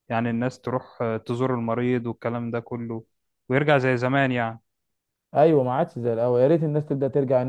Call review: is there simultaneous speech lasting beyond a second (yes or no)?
no